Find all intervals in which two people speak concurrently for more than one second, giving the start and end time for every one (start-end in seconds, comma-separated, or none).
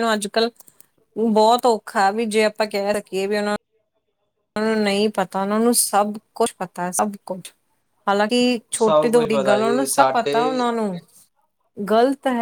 8.8-10.4